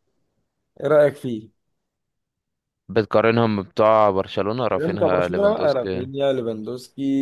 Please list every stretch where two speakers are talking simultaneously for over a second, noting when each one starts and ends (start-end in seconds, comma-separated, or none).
4.8-6.1